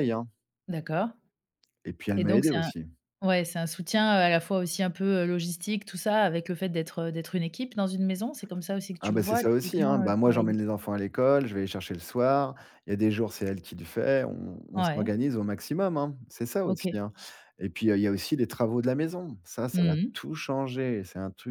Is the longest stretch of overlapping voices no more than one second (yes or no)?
no